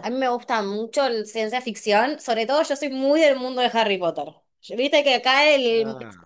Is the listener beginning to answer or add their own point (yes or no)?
no